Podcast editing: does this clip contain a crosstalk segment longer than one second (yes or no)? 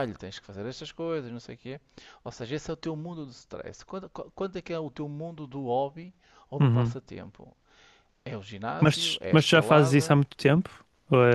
yes